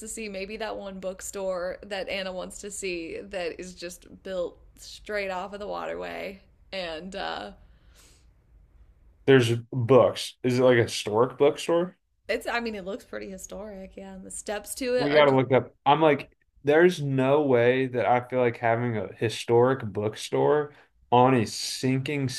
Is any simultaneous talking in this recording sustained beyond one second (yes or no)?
no